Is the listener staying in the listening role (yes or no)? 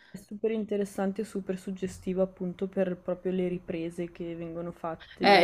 no